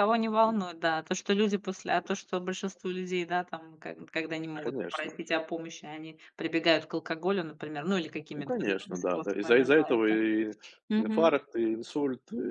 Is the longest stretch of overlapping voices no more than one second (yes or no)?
no